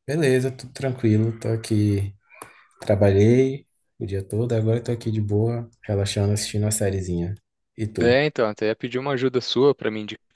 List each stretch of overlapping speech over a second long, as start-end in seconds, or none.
none